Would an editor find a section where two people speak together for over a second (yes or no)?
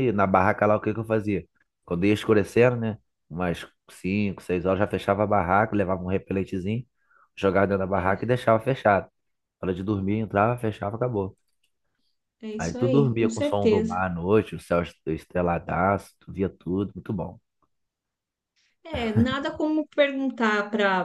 yes